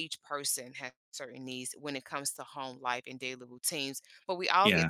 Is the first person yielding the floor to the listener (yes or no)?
no